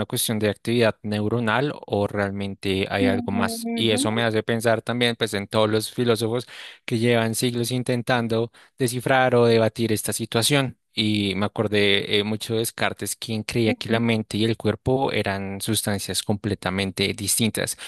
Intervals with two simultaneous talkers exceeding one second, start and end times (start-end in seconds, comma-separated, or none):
3.0-4.2